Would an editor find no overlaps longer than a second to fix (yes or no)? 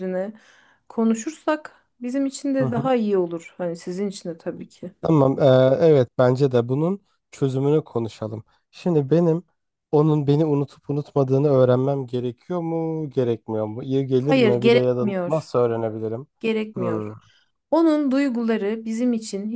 no